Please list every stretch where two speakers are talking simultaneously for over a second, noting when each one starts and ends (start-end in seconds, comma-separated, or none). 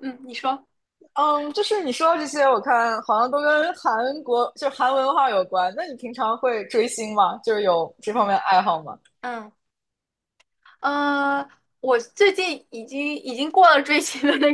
none